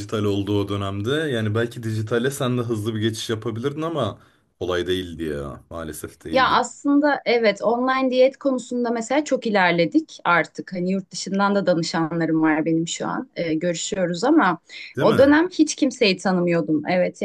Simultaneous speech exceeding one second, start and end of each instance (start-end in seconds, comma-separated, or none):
none